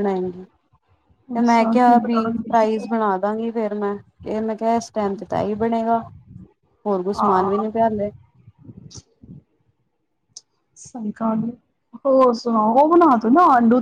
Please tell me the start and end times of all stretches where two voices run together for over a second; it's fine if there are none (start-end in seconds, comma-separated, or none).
1.4-2.9